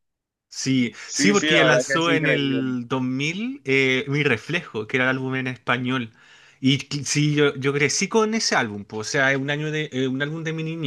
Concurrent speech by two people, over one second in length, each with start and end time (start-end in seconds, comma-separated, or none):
1.0-2.8